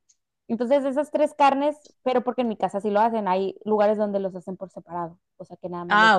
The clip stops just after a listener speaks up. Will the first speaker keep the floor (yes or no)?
no